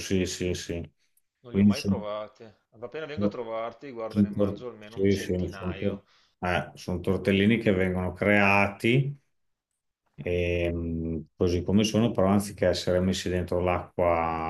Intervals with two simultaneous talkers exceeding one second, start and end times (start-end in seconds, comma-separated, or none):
4.1-6.0